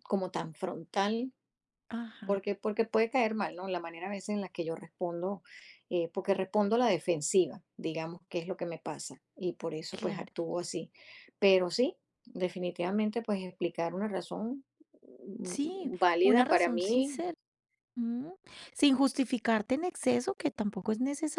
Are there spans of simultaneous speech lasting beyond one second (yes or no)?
yes